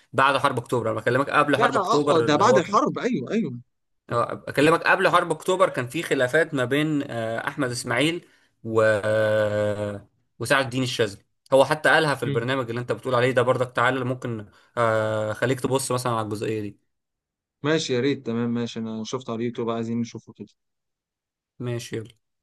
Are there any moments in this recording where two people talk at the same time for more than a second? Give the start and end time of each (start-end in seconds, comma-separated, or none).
1.6-2.8